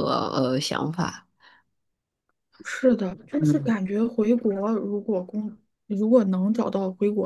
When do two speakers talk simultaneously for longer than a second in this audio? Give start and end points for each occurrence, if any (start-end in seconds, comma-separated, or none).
none